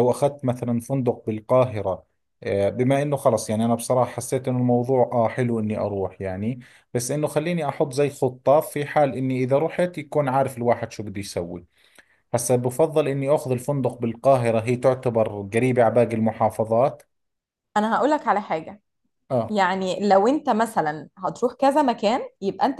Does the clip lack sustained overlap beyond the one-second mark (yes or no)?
yes